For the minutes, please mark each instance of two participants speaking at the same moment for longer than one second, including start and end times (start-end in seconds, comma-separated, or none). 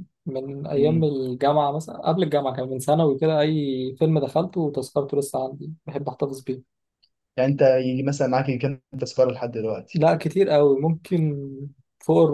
none